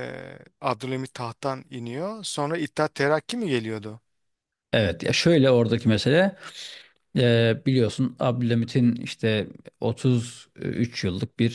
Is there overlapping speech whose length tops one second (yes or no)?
no